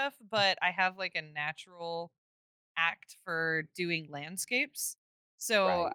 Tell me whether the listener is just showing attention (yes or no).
yes